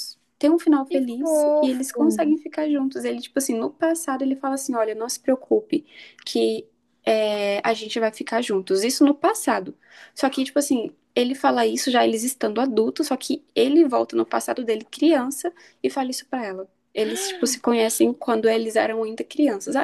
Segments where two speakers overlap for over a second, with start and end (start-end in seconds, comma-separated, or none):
0.9-2.4